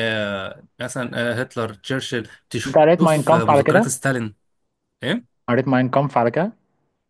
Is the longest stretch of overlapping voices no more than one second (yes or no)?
no